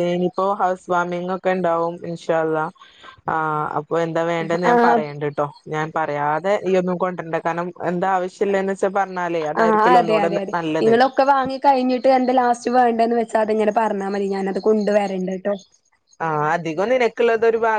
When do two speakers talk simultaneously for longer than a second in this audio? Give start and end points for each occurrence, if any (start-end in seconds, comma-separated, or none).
none